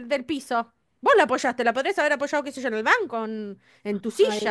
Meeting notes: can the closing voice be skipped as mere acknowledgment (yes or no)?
no